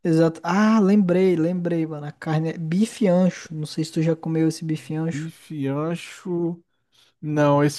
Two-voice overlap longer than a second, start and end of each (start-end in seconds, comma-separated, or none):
none